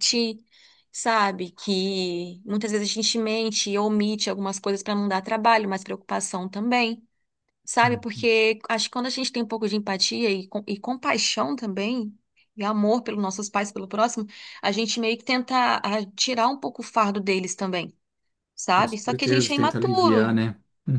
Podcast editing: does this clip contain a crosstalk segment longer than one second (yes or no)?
yes